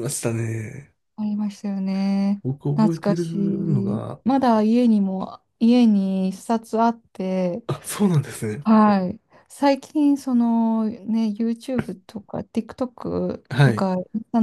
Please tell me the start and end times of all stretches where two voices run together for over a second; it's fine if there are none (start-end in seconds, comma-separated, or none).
2.4-4.2